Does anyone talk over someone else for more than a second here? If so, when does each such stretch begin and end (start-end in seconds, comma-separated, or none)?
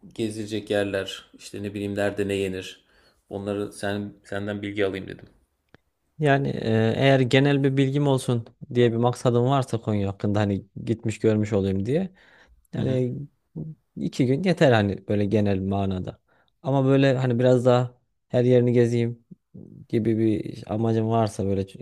none